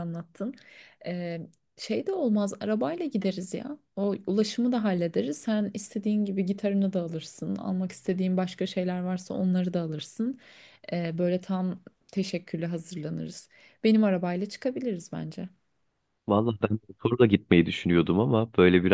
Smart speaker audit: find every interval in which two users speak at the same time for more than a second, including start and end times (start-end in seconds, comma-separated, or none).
none